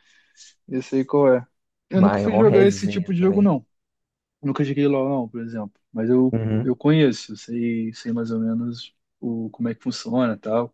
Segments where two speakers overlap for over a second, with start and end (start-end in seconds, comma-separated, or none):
1.9-3.5